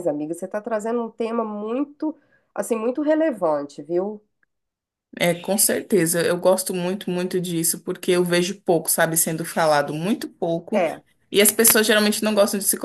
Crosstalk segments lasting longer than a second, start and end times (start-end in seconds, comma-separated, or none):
none